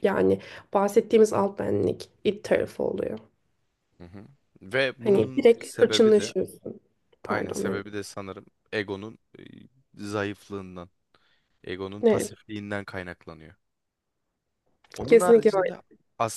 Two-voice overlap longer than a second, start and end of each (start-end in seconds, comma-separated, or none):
5.0-6.3